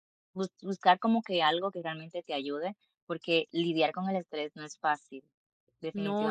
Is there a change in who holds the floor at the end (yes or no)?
yes